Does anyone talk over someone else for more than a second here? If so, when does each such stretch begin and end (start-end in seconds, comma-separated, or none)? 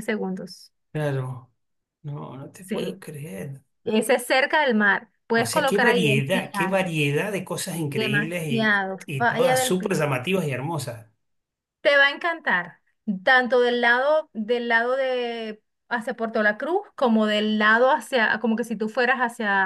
5.3-6.8, 7.9-10.0